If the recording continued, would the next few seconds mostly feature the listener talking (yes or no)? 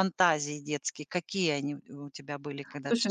yes